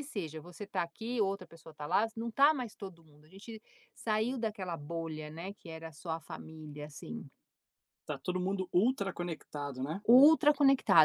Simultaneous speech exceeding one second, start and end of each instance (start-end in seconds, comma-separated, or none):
none